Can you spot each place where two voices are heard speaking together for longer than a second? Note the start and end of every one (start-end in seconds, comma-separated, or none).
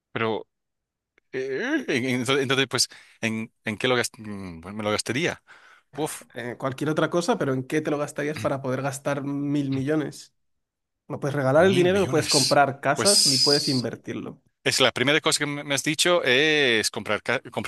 11.6-13.9